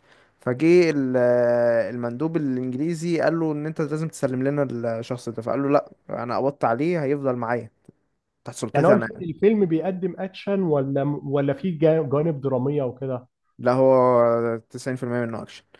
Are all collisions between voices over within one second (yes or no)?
yes